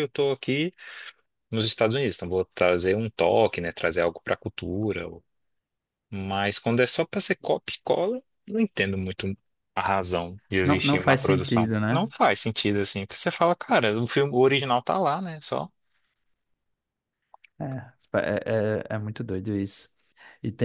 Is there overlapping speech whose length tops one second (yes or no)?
yes